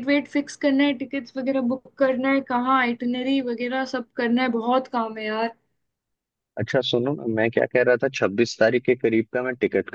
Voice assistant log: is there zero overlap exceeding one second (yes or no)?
yes